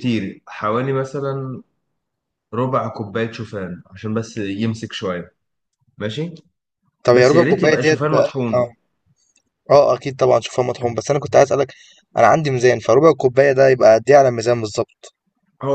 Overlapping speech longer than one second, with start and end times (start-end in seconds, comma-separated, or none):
7.1-8.7